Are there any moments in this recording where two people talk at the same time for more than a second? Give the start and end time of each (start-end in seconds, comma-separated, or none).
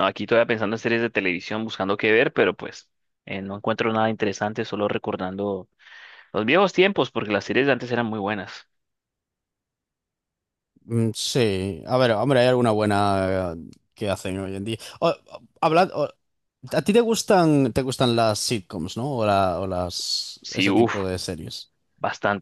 none